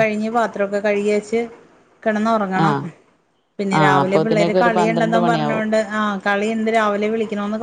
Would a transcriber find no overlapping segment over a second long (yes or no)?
no